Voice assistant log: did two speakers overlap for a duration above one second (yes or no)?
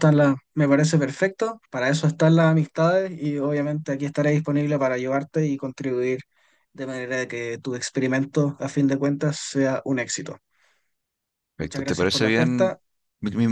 yes